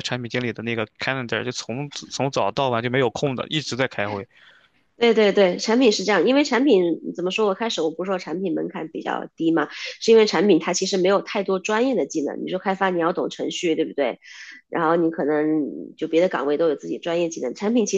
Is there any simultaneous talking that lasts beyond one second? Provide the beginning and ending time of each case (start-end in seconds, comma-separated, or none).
none